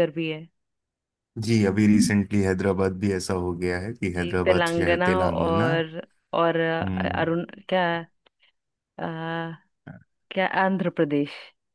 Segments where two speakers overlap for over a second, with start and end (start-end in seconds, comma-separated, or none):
4.2-5.7